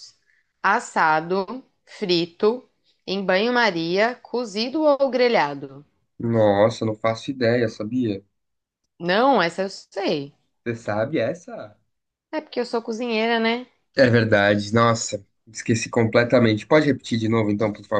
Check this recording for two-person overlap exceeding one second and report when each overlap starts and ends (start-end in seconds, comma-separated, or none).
none